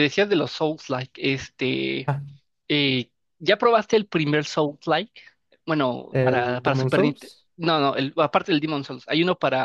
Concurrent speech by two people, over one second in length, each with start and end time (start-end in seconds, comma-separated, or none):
6.1-7.5